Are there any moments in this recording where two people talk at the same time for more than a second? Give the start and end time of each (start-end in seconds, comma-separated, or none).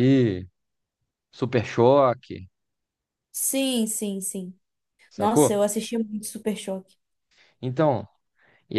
none